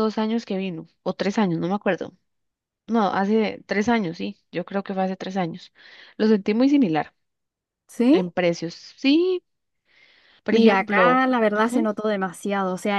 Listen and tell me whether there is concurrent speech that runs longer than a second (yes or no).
yes